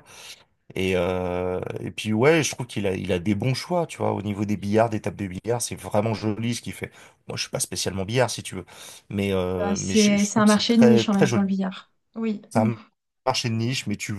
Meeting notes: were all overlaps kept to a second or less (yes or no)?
no